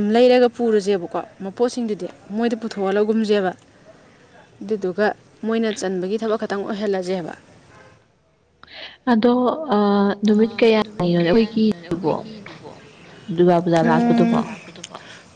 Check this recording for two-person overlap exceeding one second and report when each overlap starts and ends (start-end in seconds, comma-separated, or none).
none